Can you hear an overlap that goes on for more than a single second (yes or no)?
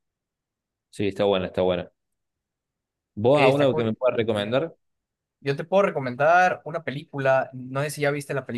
yes